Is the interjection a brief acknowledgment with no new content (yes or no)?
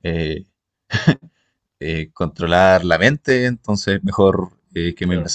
no